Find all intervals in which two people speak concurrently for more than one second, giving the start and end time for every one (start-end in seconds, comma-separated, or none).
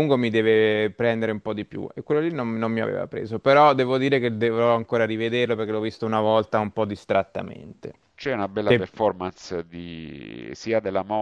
none